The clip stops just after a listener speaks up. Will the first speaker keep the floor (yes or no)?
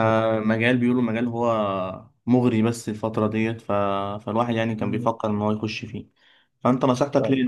yes